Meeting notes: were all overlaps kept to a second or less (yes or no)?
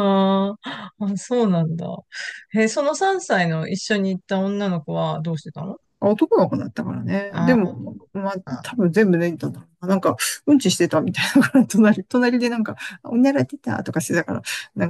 yes